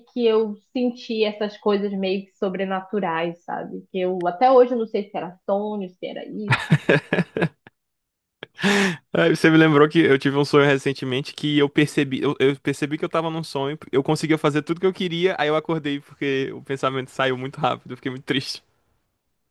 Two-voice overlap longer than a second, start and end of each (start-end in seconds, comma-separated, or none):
none